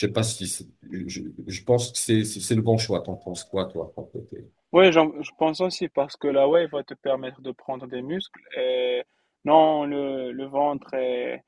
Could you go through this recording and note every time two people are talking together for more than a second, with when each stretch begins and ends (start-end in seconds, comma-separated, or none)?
none